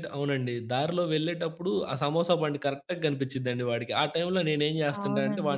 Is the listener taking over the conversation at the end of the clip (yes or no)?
no